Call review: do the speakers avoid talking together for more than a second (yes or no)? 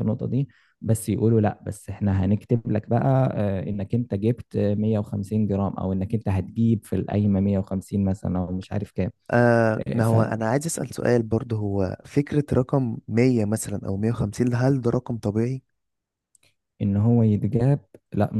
yes